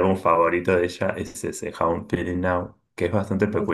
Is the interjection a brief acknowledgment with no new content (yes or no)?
yes